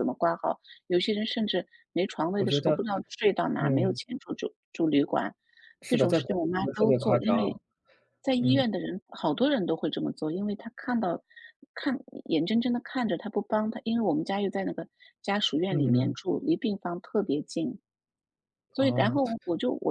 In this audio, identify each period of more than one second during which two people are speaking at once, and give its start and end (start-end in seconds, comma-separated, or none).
5.9-7.6